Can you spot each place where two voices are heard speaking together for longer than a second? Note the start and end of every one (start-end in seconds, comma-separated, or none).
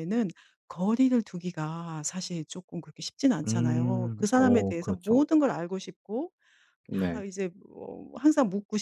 3.5-5.2